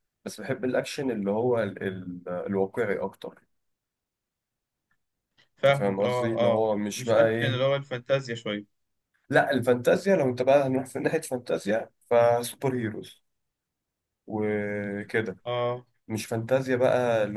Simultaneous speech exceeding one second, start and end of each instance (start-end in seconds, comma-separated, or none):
5.7-7.6